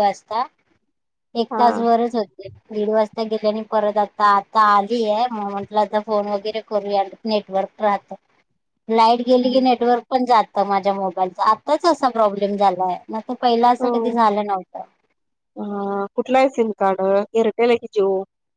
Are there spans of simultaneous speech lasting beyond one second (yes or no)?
no